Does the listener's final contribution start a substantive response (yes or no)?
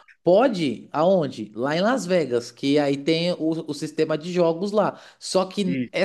no